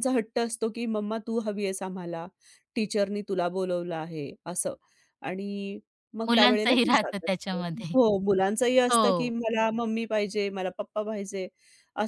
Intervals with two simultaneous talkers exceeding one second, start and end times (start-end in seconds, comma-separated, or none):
6.3-7.9